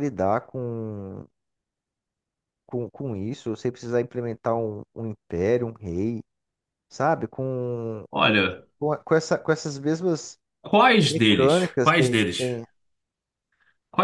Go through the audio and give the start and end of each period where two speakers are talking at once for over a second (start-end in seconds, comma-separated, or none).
11.0-12.5